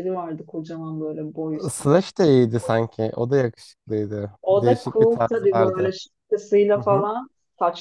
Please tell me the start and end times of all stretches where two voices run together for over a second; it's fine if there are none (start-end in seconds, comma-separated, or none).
4.4-5.9